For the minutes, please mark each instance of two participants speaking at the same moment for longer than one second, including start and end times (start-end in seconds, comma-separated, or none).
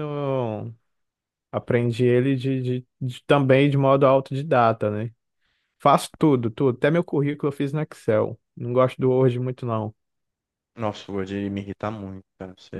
none